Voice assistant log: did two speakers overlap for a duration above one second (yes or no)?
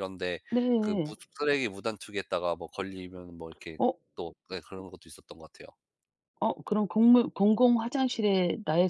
no